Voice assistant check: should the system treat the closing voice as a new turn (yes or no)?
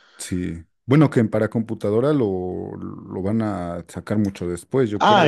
yes